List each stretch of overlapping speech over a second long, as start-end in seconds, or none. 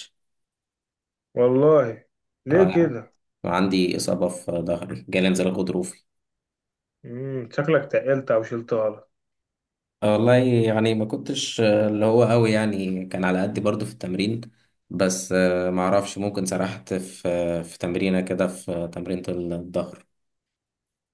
none